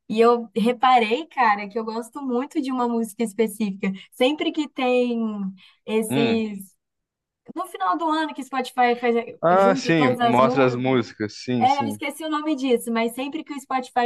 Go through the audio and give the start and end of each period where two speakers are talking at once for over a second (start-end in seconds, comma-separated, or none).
9.5-10.9